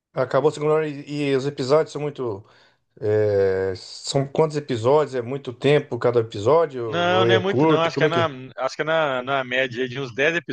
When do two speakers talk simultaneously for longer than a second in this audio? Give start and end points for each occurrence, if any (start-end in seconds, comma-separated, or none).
6.8-8.3